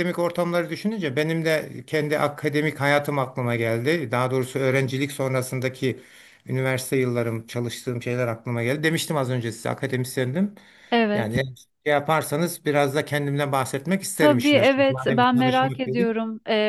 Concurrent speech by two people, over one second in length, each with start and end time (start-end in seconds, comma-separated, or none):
14.2-16.1